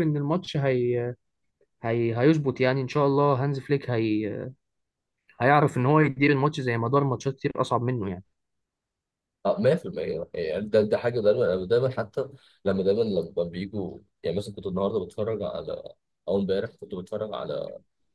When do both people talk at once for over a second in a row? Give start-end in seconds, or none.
none